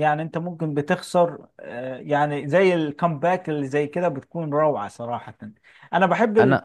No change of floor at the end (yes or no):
yes